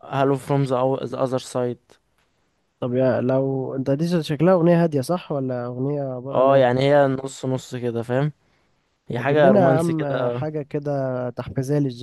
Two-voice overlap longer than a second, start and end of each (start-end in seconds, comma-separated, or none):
9.2-10.5